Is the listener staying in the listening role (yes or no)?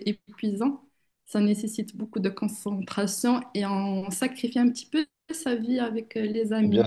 no